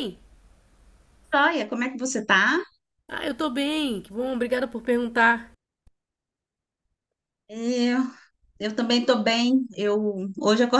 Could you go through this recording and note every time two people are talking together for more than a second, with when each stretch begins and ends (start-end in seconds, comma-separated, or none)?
none